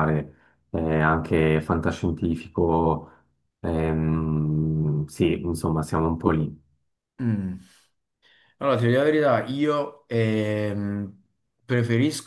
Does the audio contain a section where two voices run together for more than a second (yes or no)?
no